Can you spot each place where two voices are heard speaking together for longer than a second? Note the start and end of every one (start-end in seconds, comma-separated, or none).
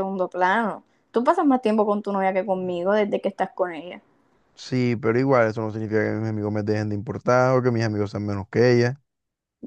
none